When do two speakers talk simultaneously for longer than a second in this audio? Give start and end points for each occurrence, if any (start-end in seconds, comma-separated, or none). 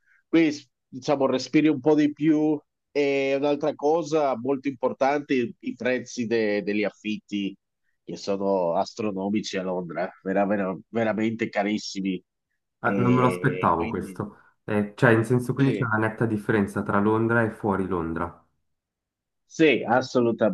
12.8-14.2